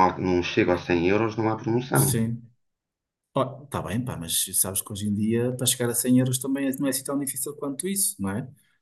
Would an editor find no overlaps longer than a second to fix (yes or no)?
yes